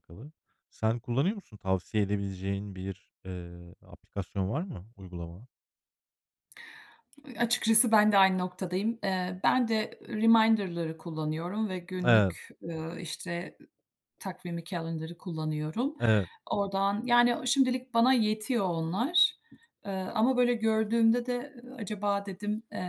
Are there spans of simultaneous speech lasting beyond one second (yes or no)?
no